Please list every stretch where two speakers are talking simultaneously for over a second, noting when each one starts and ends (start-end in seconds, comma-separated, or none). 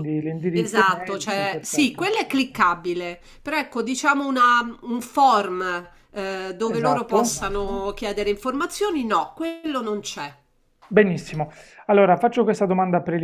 0.6-2.1